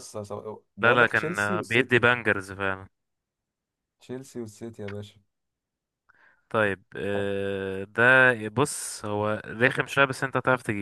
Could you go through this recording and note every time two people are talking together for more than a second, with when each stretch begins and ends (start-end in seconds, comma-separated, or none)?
0.8-2.1